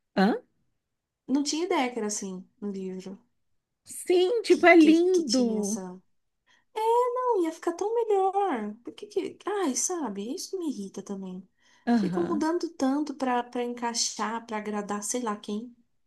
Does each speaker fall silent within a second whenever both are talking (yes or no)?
no